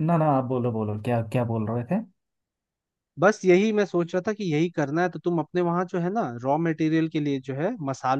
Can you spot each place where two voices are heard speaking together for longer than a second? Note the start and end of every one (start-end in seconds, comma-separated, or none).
none